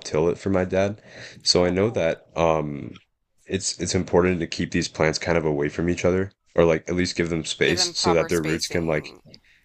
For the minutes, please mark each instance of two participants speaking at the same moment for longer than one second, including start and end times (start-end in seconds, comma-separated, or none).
7.6-9.1